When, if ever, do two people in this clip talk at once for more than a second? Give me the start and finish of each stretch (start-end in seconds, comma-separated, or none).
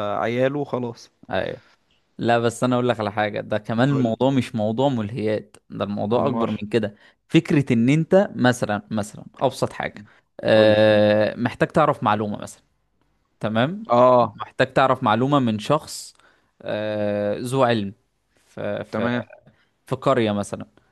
none